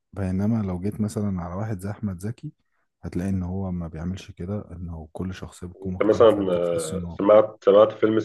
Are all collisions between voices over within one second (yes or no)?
no